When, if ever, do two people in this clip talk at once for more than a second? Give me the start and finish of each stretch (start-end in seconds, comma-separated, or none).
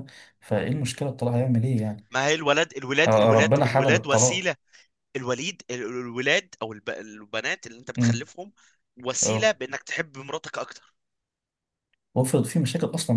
3.1-4.5